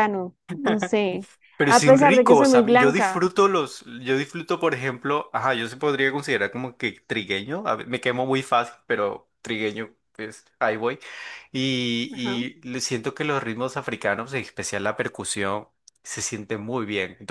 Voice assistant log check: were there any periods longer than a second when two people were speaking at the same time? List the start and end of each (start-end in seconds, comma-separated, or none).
1.7-3.2